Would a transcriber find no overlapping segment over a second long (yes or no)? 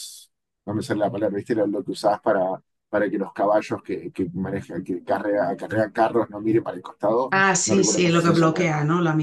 no